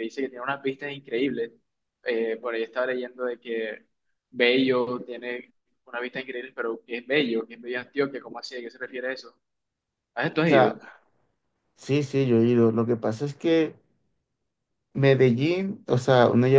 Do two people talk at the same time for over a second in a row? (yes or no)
no